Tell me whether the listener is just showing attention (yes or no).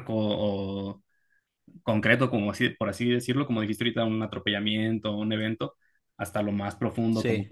yes